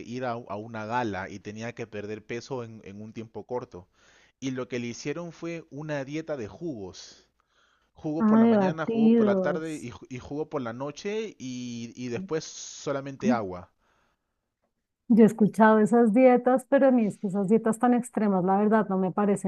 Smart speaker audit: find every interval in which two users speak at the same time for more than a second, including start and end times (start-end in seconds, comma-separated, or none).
8.2-9.9